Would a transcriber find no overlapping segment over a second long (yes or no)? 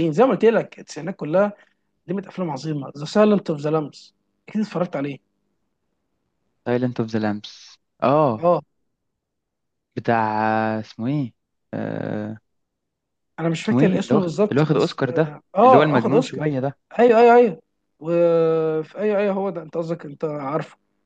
no